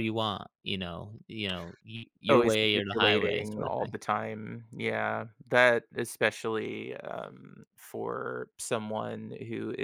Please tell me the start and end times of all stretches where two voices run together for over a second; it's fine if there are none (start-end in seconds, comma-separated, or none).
2.3-3.9